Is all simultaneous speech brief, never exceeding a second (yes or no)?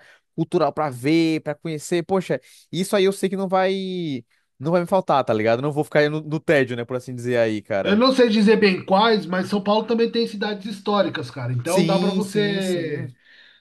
no